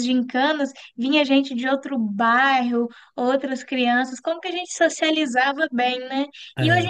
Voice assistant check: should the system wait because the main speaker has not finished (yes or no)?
yes